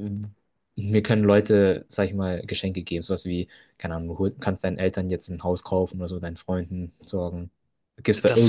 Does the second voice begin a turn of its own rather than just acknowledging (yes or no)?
yes